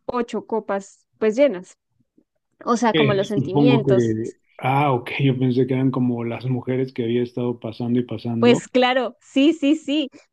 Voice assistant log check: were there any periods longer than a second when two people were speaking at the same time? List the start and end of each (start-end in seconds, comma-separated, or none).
2.9-4.2